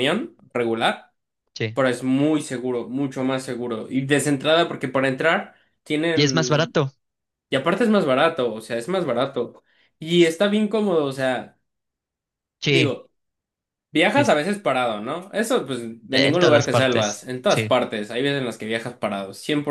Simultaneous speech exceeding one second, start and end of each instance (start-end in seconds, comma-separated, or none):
16.1-17.7